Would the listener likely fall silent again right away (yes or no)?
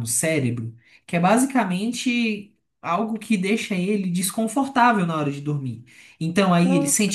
yes